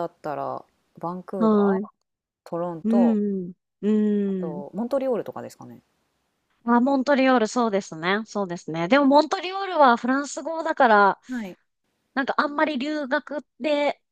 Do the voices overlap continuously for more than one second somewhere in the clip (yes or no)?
no